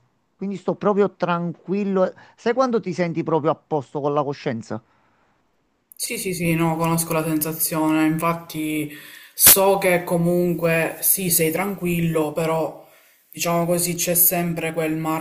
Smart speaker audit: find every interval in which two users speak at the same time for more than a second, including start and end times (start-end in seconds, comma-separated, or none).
none